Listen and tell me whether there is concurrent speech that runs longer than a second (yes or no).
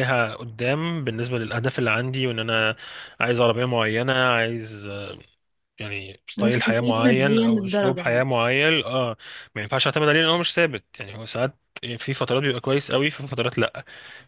yes